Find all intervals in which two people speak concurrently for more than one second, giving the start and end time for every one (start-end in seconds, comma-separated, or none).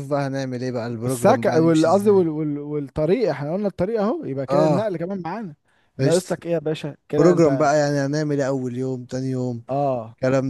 0.9-2.2